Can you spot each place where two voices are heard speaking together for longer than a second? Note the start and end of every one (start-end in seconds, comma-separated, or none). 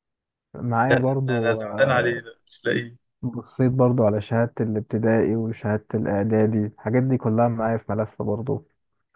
0.8-2.2